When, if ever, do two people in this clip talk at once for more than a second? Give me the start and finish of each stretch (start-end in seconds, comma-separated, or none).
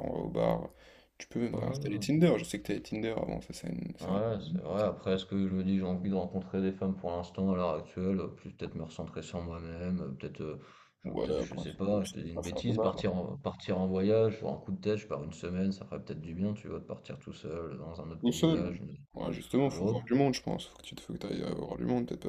11.0-13.2